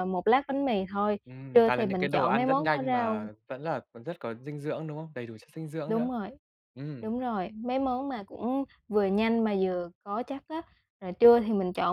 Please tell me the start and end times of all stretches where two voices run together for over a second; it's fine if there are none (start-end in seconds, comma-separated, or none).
1.5-3.3